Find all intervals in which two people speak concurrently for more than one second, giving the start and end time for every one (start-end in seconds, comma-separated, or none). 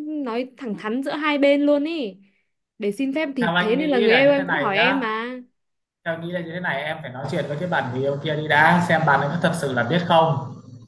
3.4-5.0